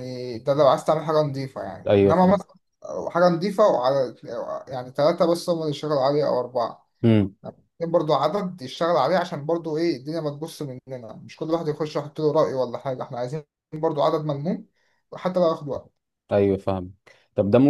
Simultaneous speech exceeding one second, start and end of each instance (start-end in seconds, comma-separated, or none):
none